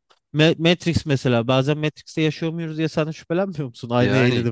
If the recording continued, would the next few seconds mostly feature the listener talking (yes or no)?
yes